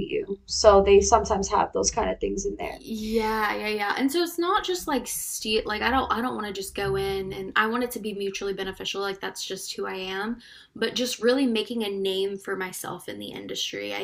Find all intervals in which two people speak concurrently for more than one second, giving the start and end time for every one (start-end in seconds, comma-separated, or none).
none